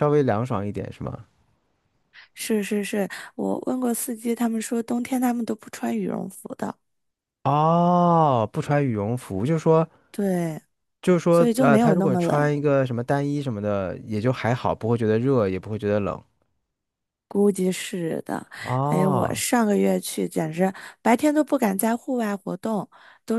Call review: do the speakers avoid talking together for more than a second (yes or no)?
no